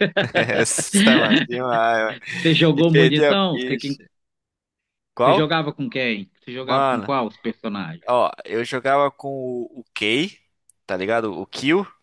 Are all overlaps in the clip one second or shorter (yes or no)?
no